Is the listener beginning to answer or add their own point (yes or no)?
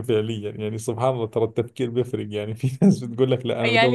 yes